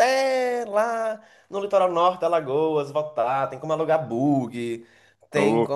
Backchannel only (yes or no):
yes